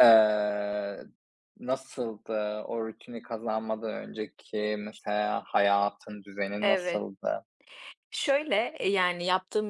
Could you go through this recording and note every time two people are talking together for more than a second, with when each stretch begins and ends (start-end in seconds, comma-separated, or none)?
none